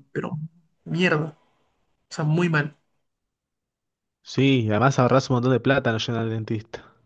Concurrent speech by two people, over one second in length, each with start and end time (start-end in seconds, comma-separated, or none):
none